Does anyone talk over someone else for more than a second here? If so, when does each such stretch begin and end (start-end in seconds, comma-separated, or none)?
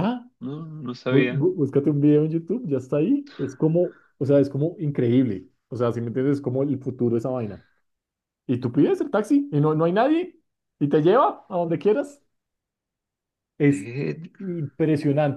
none